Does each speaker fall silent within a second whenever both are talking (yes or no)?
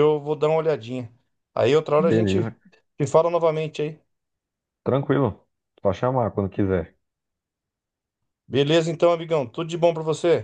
yes